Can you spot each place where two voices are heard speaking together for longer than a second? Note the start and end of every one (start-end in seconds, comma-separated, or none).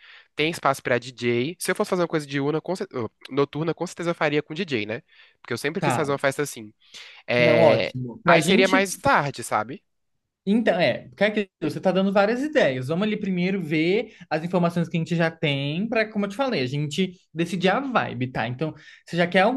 7.4-8.8